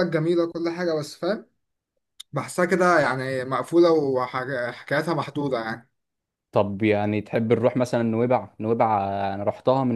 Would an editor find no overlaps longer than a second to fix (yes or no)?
yes